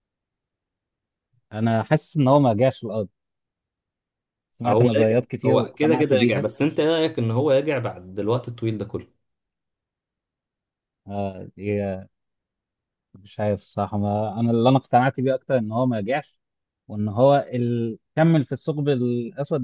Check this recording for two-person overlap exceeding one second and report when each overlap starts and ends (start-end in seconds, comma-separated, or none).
4.7-6.4